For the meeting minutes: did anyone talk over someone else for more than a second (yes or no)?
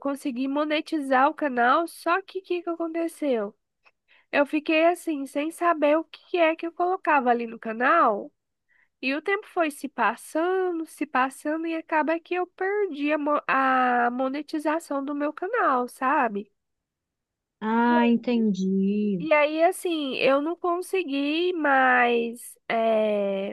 no